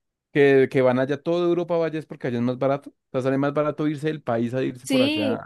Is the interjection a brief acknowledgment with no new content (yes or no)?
no